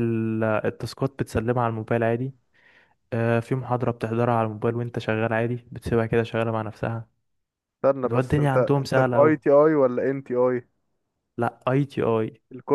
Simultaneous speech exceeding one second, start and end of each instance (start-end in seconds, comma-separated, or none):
8.0-9.4